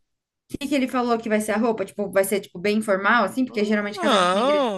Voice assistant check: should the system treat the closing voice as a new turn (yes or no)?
yes